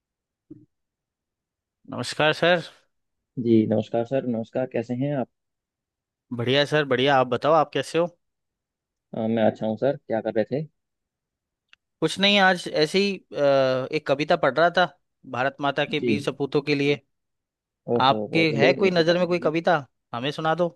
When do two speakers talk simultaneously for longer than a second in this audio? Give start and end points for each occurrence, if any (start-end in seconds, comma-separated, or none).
18.0-19.5